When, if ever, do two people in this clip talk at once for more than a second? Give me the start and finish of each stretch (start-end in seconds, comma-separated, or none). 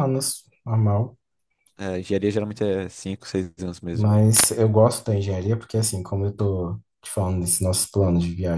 none